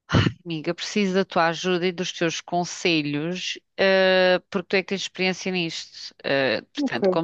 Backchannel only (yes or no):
yes